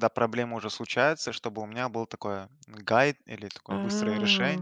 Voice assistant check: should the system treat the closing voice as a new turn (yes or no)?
no